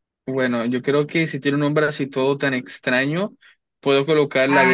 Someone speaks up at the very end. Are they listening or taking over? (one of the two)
taking over